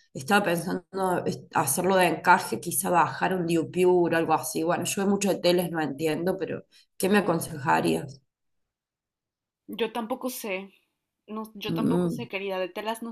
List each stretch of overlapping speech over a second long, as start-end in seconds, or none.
none